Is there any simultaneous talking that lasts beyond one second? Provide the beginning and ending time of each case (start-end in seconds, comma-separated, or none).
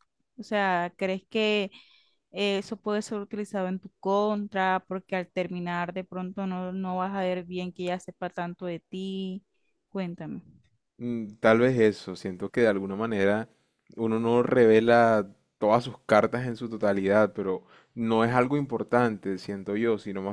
none